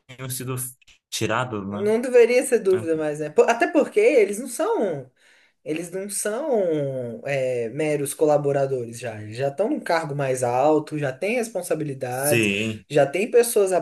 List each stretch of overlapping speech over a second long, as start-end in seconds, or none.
none